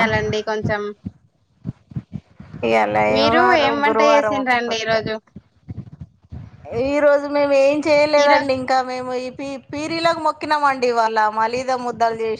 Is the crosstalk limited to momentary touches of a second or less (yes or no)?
no